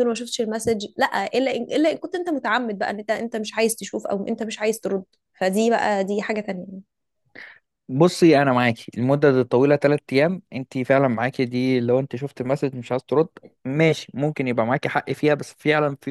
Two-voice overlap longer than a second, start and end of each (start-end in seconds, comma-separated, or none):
none